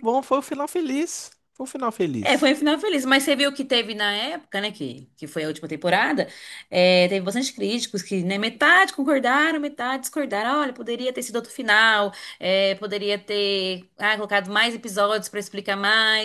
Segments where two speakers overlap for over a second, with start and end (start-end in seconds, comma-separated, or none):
none